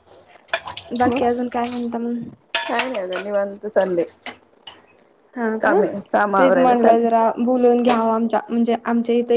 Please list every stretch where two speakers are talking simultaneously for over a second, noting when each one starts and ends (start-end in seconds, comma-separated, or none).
none